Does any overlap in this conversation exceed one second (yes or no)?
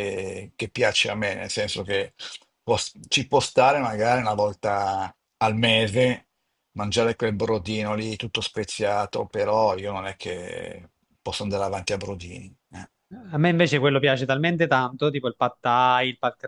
no